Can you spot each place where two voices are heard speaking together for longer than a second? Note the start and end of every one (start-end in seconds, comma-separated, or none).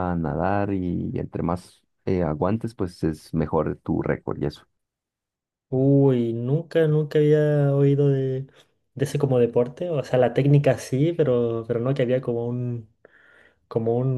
none